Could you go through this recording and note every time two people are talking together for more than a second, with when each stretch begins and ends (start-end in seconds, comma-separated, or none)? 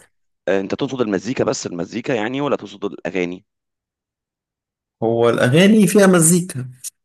none